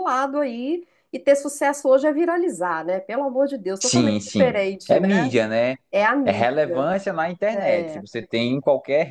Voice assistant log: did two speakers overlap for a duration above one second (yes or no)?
yes